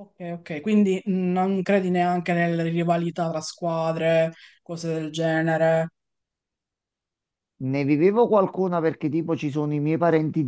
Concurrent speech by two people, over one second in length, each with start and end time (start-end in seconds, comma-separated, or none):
none